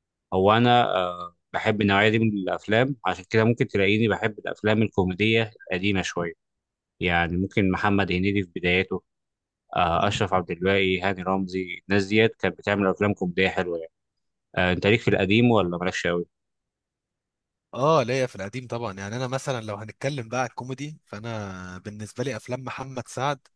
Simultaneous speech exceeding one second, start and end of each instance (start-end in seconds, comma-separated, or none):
none